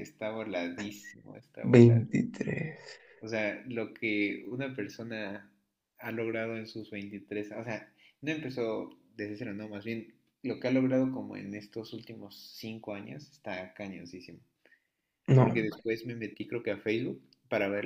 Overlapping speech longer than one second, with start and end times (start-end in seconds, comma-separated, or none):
none